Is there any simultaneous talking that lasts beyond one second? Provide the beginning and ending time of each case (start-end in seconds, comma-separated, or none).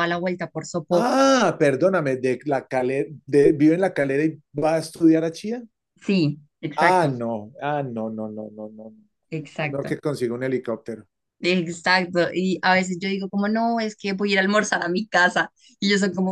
none